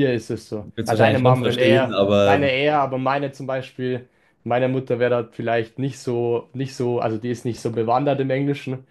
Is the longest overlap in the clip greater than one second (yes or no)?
yes